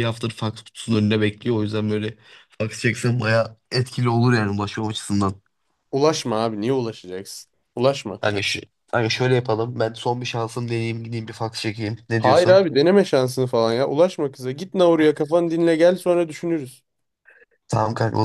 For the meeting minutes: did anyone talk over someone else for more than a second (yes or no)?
no